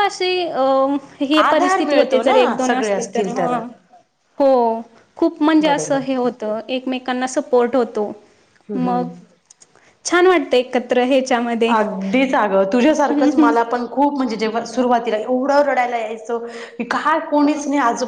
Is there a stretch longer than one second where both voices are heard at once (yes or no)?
yes